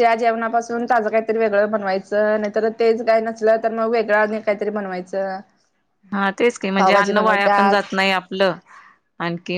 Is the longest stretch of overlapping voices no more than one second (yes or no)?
yes